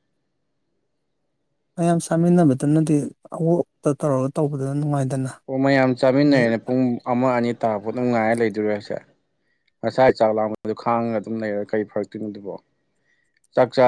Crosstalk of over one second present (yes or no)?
no